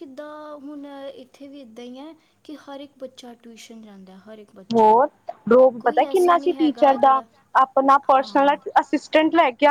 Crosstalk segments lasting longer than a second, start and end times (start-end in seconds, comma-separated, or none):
5.8-7.1